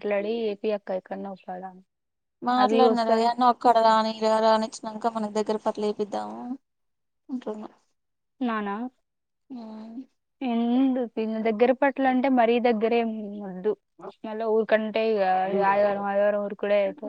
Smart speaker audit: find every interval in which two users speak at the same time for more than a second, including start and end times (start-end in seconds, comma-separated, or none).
none